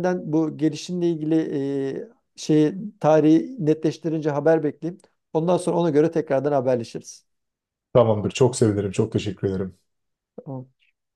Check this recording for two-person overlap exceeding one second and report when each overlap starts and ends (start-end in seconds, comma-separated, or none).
none